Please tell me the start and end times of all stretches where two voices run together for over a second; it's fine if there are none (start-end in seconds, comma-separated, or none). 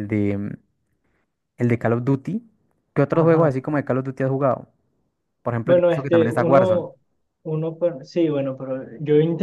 5.6-6.8